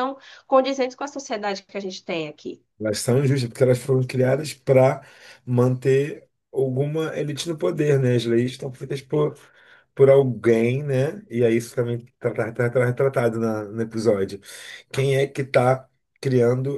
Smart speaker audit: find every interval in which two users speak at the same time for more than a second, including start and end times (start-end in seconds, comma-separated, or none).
none